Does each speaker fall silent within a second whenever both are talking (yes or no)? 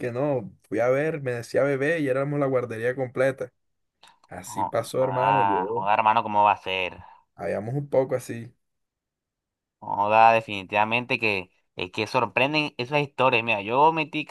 no